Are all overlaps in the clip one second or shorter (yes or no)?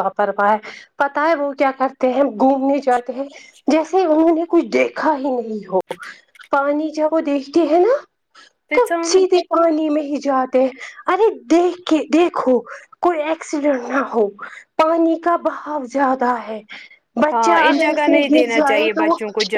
no